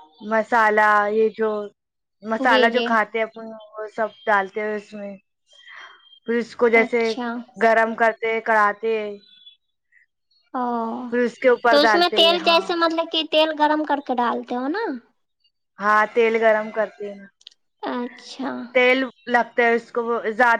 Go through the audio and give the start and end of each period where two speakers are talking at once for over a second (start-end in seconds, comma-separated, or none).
none